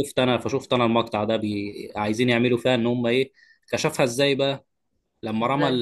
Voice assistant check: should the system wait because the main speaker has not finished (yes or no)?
yes